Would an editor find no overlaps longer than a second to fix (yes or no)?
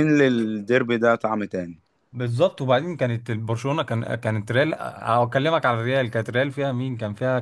yes